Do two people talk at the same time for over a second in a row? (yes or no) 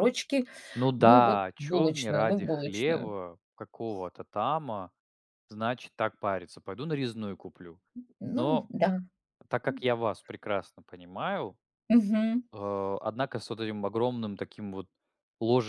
yes